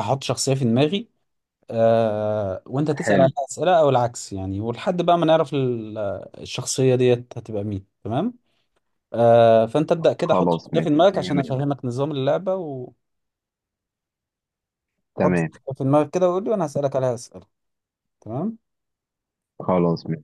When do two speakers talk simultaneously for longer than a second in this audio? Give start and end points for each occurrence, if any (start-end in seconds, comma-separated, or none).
10.2-11.5